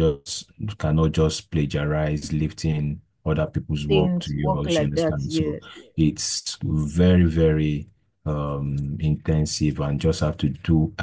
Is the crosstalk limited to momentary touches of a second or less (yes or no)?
no